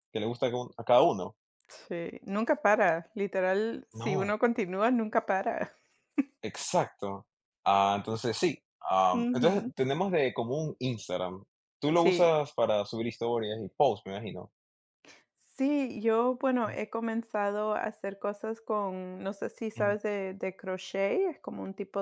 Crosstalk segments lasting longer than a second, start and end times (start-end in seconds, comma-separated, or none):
none